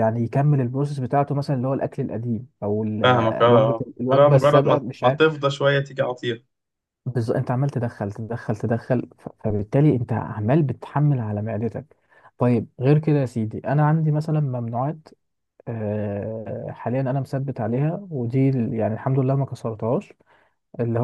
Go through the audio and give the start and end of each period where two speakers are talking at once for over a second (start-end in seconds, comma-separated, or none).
3.0-5.2